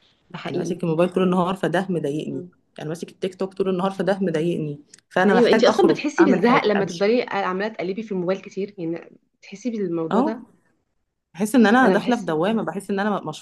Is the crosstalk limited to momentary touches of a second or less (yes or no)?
no